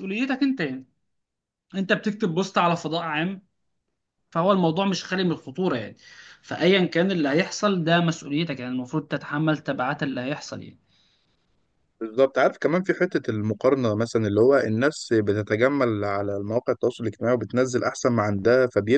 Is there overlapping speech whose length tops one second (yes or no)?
no